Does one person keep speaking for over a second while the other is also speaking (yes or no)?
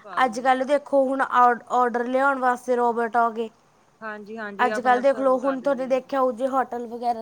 yes